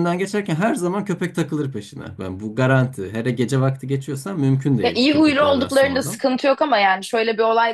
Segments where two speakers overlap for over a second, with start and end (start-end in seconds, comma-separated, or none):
4.8-6.2